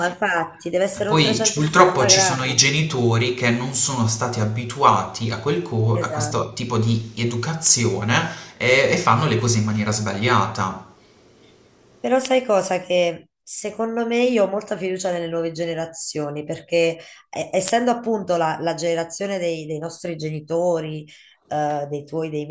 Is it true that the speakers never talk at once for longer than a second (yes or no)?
no